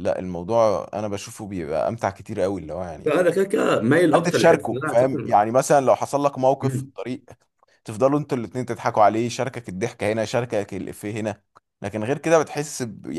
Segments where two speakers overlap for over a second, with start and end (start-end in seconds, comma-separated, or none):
4.1-5.4